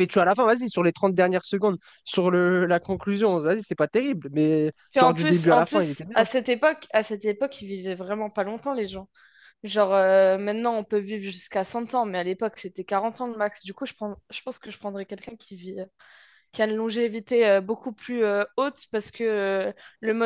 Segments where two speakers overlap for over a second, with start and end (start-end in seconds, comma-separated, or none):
4.9-6.3